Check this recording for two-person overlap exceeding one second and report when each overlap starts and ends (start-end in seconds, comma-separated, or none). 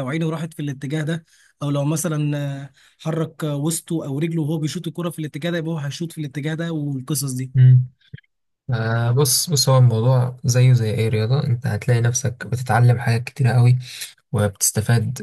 none